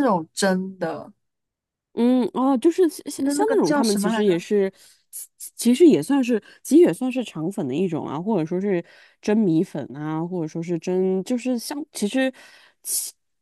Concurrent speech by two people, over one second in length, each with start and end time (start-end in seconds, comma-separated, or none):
3.1-4.4